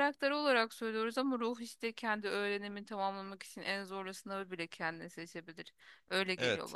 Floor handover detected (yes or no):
yes